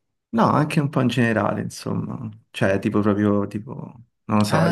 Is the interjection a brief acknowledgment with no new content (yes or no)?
no